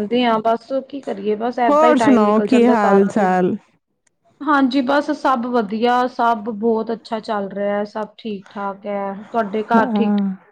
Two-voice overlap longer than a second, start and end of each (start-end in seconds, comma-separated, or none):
1.7-3.3